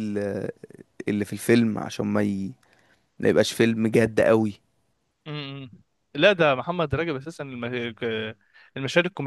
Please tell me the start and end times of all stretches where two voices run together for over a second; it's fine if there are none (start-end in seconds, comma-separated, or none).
none